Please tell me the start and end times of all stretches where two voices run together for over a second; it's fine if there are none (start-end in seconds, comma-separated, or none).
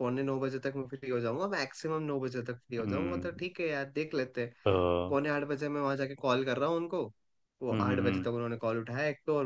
none